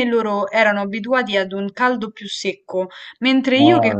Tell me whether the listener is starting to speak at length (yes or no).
no